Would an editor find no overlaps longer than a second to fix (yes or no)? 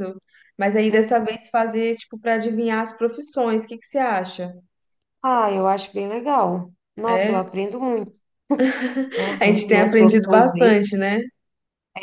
no